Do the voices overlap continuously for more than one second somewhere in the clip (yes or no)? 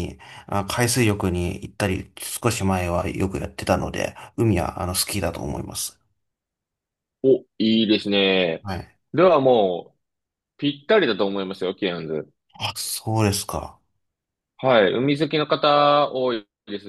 no